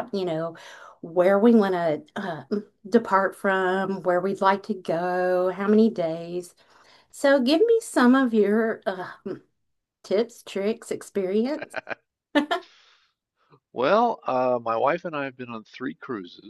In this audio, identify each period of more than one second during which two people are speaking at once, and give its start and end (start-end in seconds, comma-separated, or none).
none